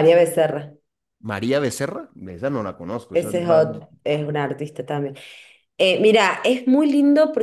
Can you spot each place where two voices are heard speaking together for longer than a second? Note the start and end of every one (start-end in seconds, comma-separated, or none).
none